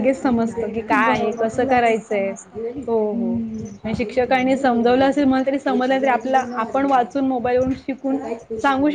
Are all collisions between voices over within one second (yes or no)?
no